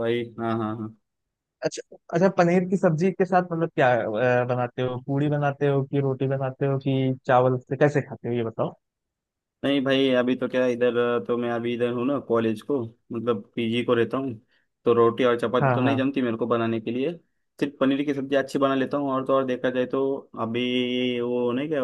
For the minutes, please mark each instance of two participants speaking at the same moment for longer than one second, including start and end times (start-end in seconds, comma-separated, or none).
none